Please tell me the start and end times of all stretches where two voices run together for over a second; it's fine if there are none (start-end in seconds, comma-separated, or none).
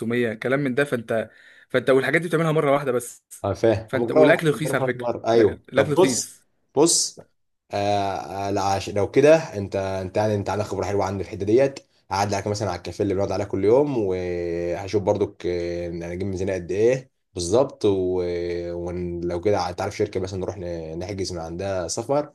3.9-6.4